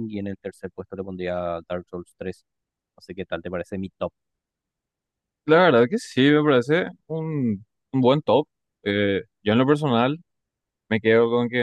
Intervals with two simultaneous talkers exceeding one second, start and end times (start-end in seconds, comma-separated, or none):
none